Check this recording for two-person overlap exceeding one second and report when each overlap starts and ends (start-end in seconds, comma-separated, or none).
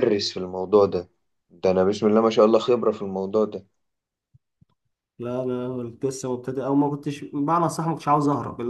none